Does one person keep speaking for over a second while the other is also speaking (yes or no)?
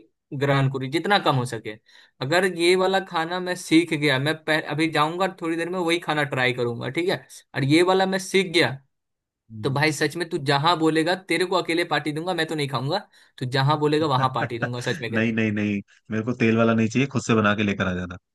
no